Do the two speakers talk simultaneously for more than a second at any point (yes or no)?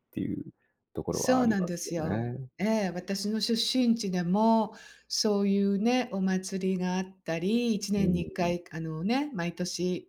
yes